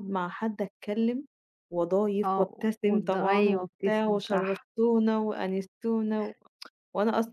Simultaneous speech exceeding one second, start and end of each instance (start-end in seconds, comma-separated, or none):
2.2-4.7